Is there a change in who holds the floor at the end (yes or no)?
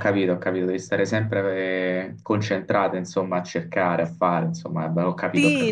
yes